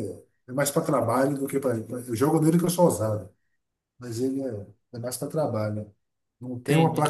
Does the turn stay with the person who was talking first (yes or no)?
yes